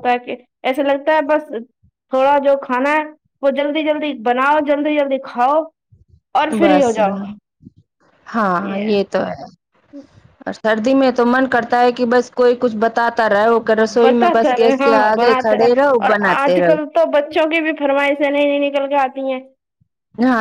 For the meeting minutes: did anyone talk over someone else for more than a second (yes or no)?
yes